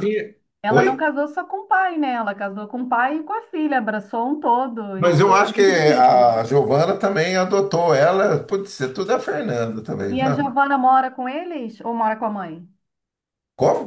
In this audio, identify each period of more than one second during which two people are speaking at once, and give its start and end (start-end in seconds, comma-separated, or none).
5.0-6.4